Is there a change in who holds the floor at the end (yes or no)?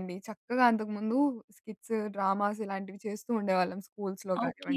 yes